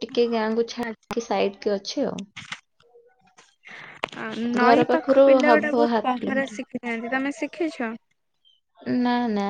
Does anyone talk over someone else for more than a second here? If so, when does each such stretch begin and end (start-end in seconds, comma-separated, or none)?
4.6-6.6